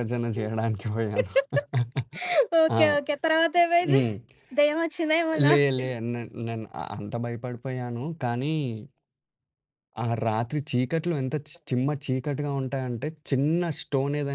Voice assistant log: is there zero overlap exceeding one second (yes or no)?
yes